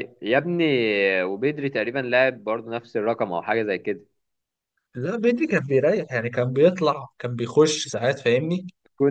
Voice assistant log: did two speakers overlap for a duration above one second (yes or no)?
no